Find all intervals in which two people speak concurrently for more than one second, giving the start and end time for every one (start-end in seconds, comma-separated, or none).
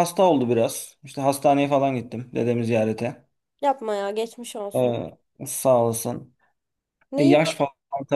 none